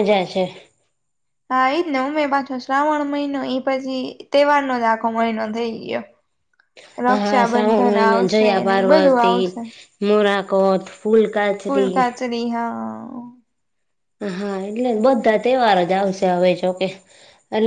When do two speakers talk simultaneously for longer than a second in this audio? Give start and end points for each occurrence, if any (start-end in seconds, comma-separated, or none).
7.1-9.3